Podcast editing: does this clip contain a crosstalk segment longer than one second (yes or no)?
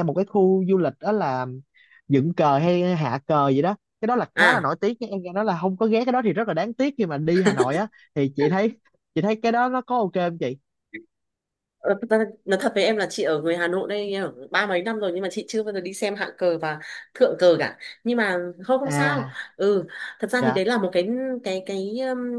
no